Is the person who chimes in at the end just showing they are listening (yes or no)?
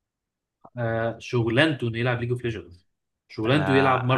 no